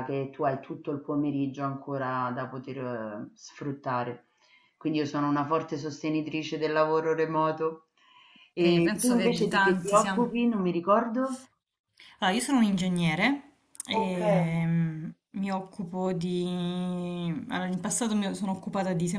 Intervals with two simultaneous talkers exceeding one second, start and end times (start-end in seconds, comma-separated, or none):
8.6-10.3